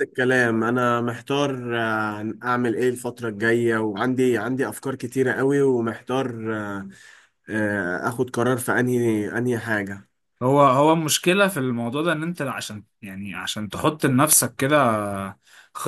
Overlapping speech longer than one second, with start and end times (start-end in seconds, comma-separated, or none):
none